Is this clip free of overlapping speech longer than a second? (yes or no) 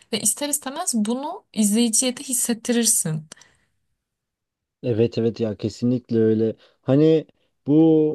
yes